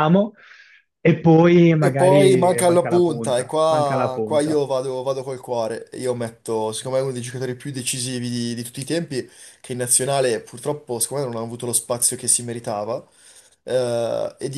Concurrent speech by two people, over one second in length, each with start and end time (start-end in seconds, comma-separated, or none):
1.8-4.6